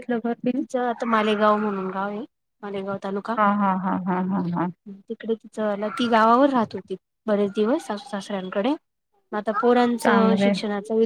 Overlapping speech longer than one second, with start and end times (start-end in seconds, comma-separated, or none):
none